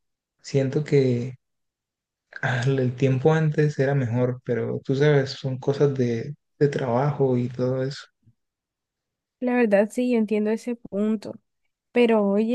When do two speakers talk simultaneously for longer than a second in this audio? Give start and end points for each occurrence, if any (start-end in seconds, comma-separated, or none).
none